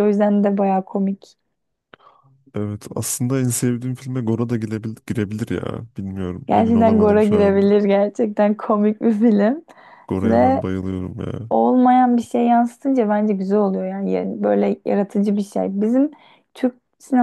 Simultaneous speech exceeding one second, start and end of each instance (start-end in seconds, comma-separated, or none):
6.5-7.7